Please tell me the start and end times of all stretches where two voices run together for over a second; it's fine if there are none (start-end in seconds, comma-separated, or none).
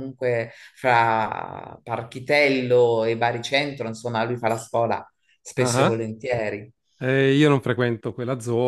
none